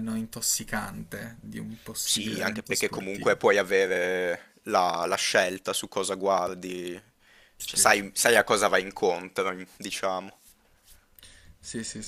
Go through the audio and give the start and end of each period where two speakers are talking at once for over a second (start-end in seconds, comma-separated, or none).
2.0-3.4